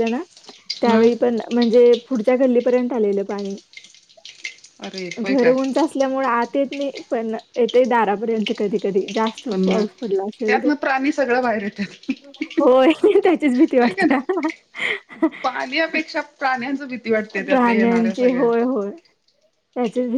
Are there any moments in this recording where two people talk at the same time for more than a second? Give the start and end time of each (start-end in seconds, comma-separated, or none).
none